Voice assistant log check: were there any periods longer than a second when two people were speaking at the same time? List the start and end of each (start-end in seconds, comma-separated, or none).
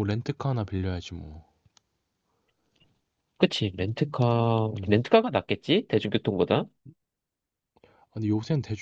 none